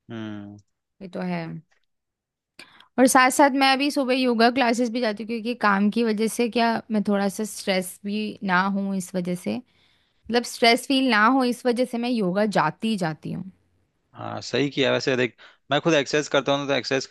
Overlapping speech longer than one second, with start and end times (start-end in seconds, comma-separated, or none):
none